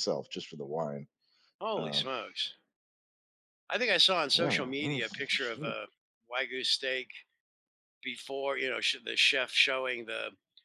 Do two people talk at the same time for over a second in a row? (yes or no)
yes